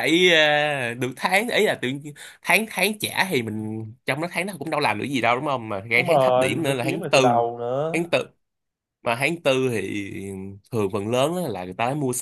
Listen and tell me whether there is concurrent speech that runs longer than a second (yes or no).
yes